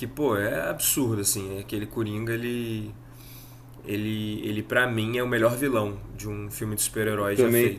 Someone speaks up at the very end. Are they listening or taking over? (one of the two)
taking over